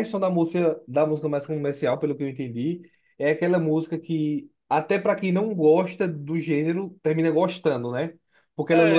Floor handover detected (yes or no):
no